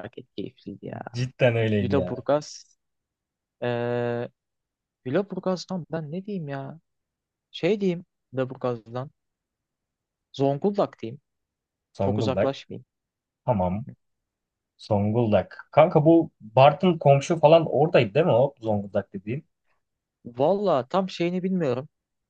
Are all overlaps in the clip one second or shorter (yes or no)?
yes